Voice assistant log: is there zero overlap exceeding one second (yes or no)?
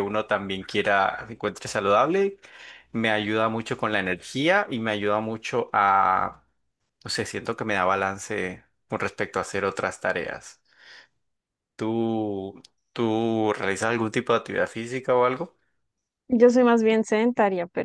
yes